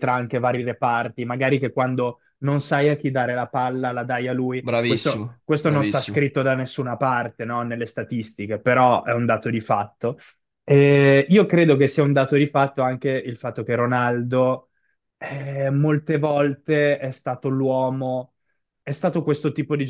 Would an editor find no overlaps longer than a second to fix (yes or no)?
no